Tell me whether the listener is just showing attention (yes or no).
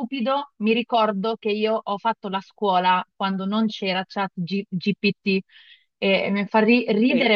no